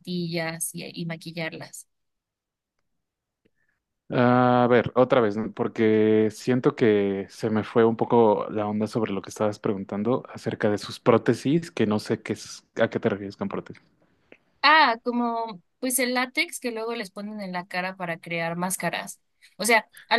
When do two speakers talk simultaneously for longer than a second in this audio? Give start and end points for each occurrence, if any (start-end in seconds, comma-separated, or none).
none